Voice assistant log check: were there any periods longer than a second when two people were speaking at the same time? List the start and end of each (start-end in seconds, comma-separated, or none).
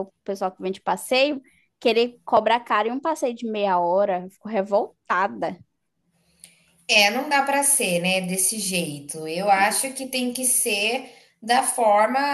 none